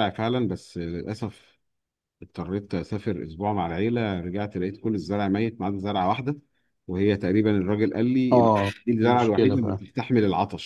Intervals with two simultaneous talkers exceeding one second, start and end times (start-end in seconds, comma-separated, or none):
8.3-9.9